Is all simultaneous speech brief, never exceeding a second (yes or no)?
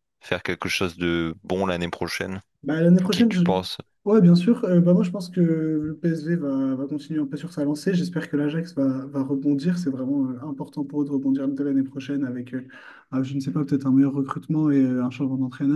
yes